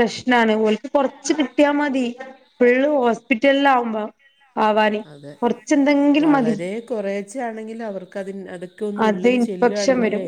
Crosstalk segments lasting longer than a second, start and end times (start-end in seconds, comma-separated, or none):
none